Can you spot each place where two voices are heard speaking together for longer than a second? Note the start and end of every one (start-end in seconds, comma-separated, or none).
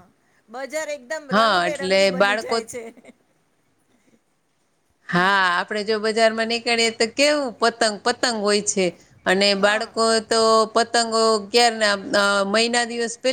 1.3-2.6